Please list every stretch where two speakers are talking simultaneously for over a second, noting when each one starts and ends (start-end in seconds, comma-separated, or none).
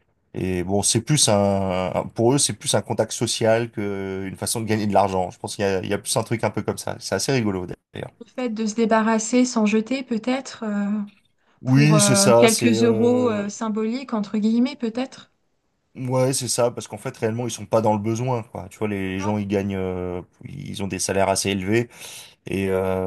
11.6-13.4